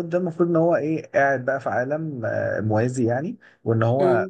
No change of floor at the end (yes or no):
yes